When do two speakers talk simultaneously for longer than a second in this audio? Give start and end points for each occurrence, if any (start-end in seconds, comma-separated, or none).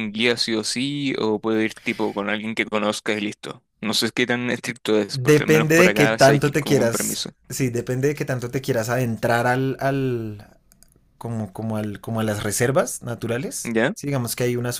5.1-7.3